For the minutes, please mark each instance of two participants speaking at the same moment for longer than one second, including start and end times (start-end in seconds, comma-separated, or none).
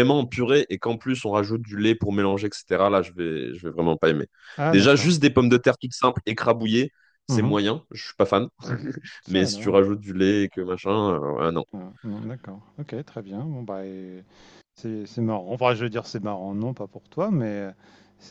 none